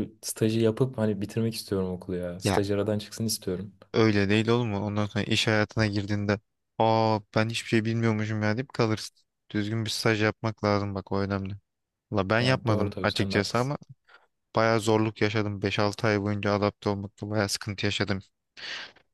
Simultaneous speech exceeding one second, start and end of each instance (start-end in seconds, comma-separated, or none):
12.4-13.7